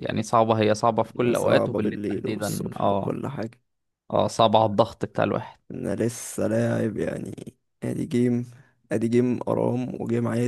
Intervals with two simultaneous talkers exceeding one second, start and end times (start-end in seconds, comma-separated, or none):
1.1-3.1